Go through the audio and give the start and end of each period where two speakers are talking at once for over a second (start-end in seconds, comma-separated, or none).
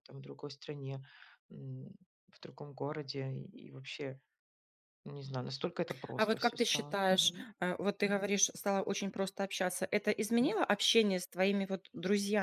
6.2-7.5